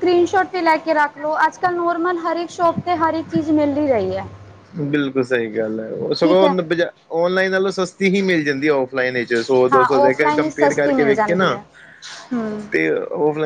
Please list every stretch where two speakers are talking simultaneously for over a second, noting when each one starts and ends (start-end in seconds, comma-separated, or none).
9.7-11.6